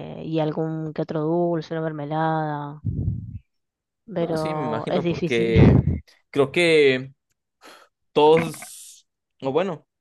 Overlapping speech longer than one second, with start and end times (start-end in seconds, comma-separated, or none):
4.2-5.5